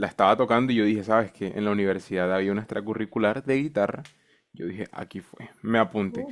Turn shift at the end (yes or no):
no